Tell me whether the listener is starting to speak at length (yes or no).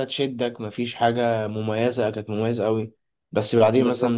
no